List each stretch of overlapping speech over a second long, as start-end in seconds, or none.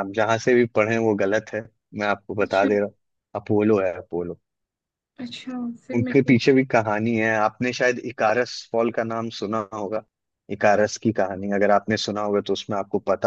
none